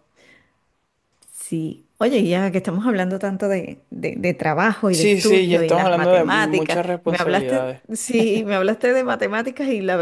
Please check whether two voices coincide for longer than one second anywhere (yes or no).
yes